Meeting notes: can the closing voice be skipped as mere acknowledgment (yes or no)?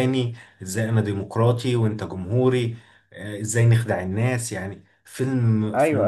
no